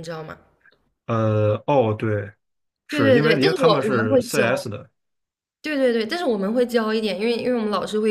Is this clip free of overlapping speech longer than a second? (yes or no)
no